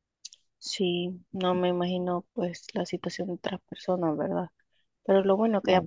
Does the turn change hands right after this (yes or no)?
no